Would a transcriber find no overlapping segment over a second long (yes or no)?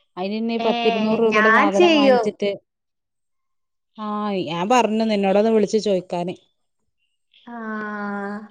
no